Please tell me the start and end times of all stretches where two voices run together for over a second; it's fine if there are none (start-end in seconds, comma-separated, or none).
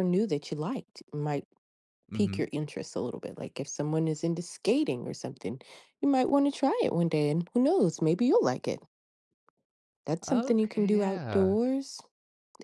10.3-11.6